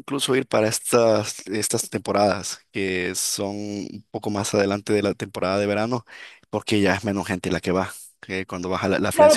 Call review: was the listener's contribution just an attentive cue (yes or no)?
no